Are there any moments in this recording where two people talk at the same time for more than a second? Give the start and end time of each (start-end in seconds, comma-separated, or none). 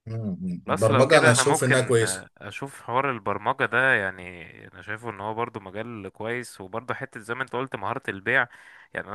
0.7-2.3